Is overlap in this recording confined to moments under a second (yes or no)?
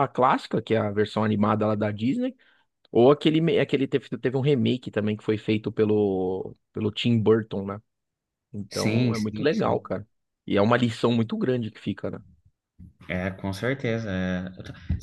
no